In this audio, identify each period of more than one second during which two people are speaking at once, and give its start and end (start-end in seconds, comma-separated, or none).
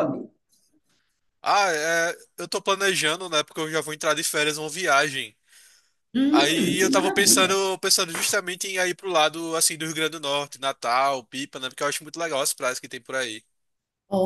6.3-7.5